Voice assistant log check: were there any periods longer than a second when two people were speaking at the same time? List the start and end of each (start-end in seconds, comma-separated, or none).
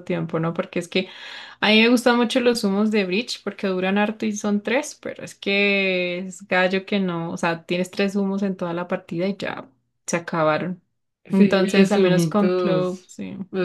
11.3-13.1